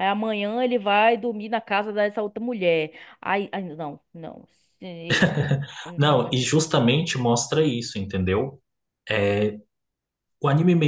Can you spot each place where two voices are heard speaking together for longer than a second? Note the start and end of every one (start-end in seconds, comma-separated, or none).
none